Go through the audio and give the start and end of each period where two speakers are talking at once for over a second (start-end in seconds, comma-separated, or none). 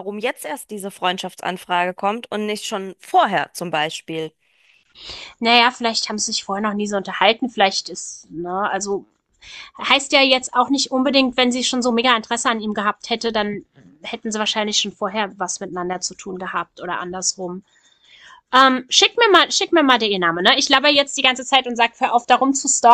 none